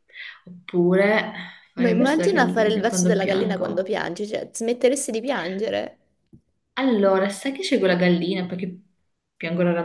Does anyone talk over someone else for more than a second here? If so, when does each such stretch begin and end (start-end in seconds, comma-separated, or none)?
1.8-3.9